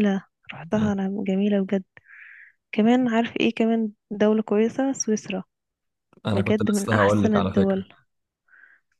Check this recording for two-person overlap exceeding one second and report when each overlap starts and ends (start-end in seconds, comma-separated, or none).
6.3-7.8